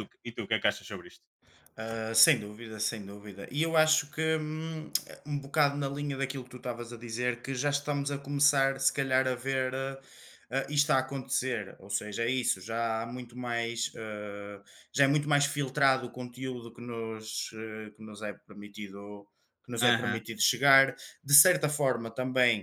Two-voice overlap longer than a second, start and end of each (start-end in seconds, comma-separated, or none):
none